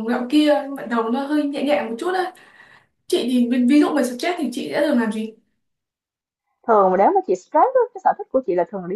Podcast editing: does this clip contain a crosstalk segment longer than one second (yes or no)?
no